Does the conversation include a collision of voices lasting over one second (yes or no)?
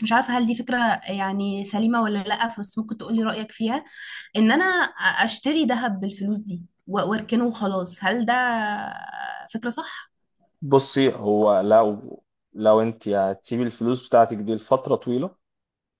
no